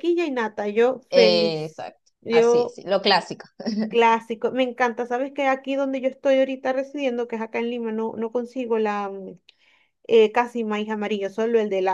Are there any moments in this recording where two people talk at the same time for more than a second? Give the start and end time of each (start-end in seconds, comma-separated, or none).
1.1-2.8